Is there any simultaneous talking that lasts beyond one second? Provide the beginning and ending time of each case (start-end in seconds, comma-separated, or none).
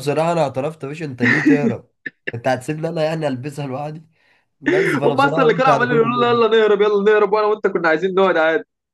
5.0-6.4